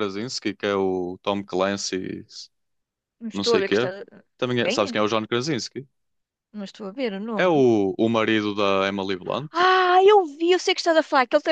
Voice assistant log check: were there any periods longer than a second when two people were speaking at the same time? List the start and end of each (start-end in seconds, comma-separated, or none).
none